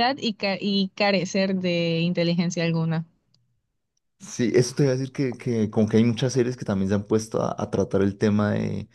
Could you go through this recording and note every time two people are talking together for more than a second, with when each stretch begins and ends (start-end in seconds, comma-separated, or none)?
none